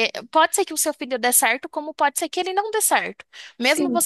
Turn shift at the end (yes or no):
no